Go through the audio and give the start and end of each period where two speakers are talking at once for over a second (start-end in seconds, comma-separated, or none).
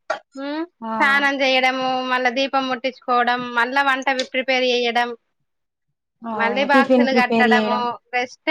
6.4-7.8